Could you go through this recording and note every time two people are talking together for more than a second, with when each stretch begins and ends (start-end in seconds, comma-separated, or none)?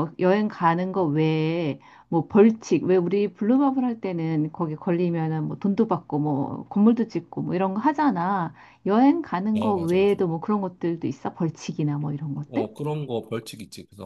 none